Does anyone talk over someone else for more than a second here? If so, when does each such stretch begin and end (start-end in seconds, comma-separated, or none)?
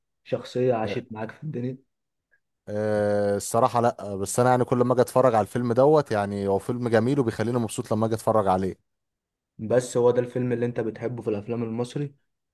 none